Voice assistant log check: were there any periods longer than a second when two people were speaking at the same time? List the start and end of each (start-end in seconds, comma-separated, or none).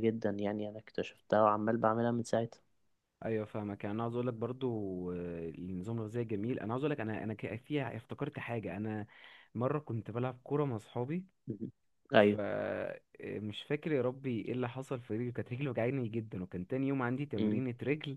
none